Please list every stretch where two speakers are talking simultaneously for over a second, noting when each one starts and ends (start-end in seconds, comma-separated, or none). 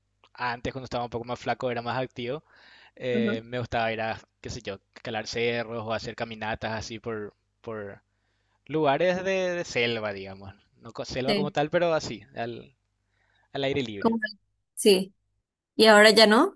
none